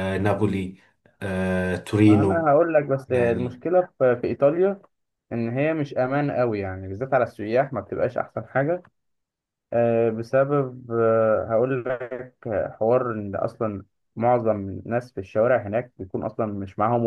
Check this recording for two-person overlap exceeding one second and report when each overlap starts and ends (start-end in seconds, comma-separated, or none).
none